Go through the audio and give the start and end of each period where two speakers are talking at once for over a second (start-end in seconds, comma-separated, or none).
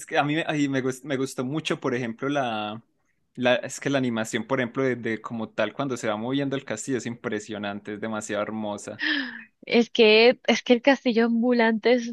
none